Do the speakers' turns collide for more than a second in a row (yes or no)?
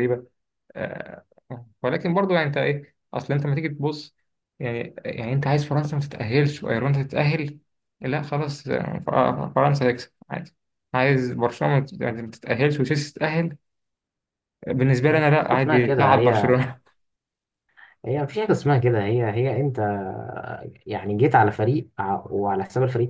yes